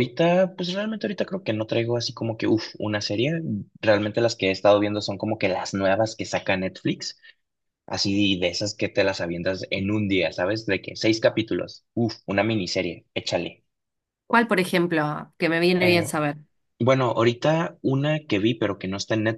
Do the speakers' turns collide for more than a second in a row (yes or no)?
no